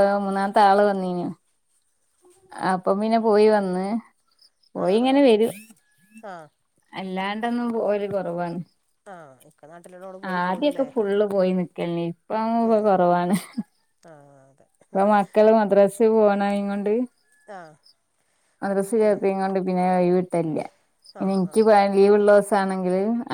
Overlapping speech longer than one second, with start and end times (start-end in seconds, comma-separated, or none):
none